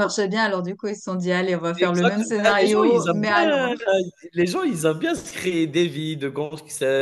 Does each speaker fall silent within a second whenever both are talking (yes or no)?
no